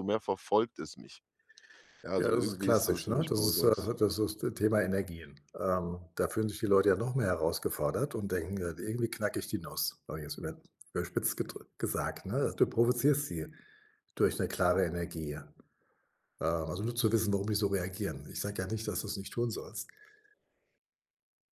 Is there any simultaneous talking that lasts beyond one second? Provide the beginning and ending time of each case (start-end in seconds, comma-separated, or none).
2.2-3.9